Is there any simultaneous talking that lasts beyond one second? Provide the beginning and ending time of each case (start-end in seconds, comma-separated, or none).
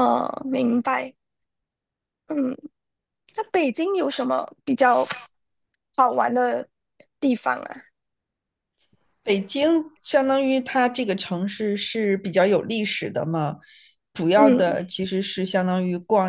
none